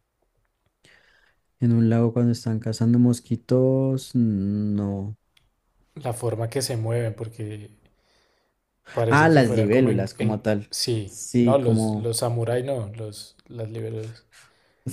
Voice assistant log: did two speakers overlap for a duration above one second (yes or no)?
yes